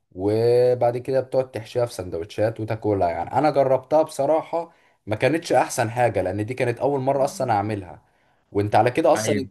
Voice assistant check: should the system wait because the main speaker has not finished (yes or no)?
yes